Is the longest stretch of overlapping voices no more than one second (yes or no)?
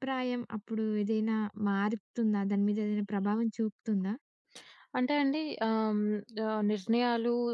yes